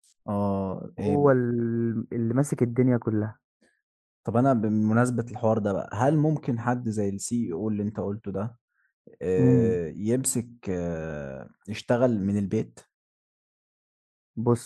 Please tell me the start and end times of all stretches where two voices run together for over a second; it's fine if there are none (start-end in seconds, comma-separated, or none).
none